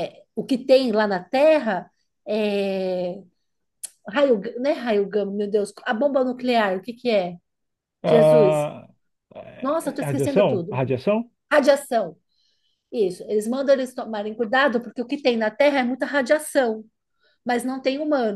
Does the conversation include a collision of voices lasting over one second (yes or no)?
yes